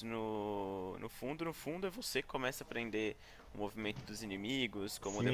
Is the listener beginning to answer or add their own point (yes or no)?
yes